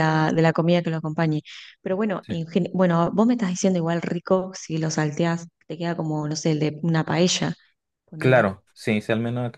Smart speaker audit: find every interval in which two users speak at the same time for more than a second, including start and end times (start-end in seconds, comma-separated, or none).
none